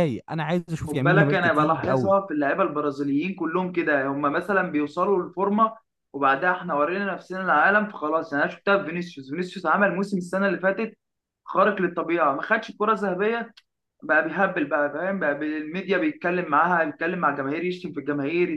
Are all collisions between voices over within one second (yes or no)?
no